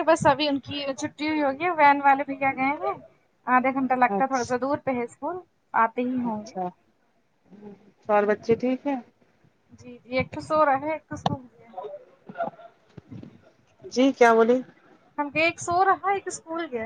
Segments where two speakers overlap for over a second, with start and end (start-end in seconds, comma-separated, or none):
none